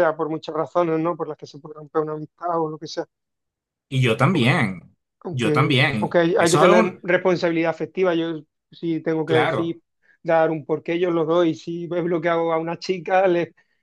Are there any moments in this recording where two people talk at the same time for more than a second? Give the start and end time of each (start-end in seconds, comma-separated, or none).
5.5-7.0